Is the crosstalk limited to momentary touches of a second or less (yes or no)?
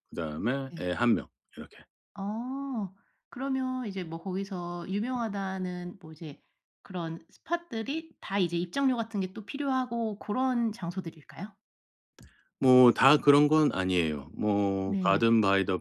yes